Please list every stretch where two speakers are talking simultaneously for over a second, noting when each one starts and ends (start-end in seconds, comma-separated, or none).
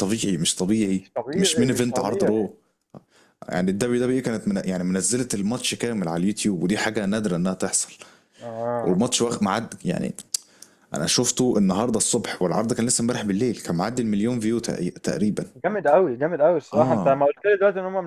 1.0-2.5